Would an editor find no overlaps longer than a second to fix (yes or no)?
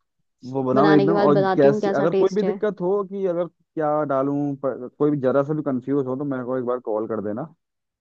no